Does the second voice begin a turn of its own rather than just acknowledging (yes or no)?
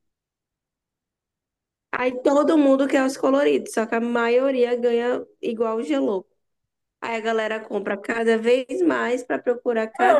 yes